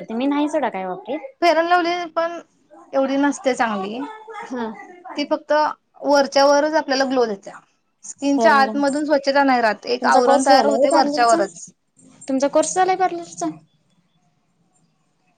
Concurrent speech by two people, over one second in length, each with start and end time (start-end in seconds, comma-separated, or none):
10.0-11.4